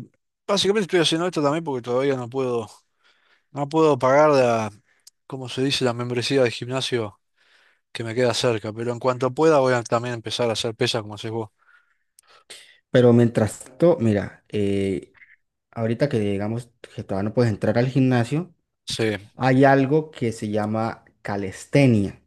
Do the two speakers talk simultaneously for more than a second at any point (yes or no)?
no